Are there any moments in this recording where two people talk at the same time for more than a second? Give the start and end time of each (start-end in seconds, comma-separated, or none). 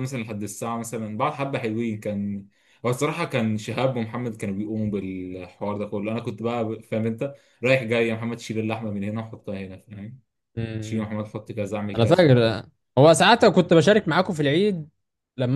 none